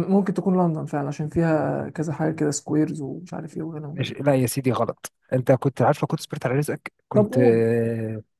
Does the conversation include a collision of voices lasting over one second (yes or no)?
no